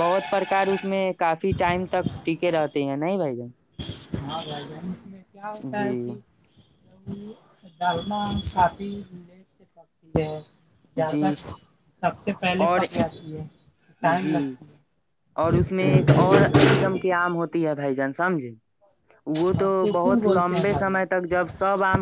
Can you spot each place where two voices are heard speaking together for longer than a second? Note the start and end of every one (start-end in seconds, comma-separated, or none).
19.6-21.2